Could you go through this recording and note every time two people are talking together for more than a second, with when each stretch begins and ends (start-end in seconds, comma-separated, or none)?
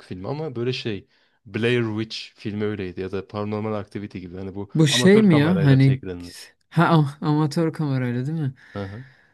4.7-6.0